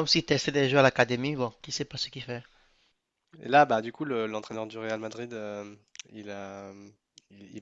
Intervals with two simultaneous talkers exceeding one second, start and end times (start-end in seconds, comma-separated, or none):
none